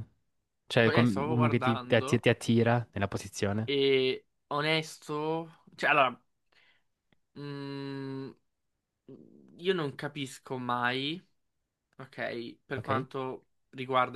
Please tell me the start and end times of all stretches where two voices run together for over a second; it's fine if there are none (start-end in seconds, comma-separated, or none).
0.8-2.2